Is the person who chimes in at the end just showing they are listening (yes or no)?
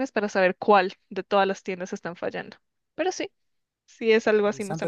no